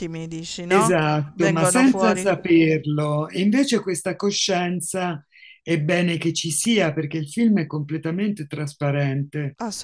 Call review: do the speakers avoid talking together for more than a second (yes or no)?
no